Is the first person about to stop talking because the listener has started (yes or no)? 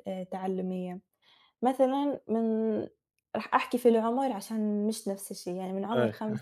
no